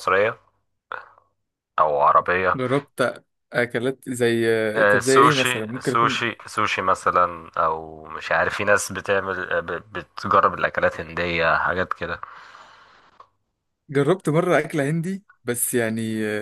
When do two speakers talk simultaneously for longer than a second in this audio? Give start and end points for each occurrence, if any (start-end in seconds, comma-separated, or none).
4.9-6.2